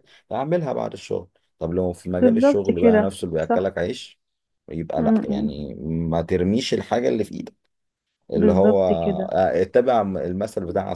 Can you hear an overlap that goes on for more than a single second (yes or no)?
yes